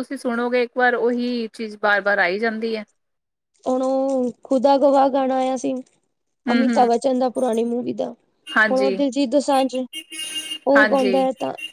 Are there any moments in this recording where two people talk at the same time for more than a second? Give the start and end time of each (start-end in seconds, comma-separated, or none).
none